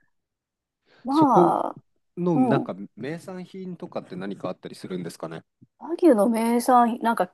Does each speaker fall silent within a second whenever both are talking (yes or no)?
yes